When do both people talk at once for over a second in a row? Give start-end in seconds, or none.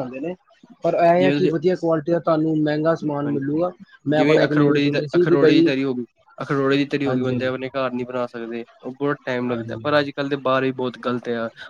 4.1-5.7